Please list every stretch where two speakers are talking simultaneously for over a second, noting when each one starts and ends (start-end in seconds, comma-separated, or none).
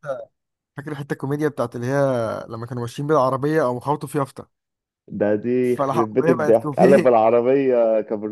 5.6-7.1